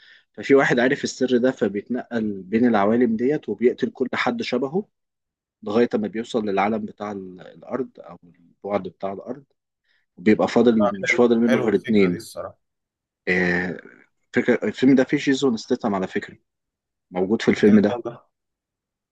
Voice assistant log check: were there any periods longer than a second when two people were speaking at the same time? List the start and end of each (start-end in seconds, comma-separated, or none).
10.8-12.2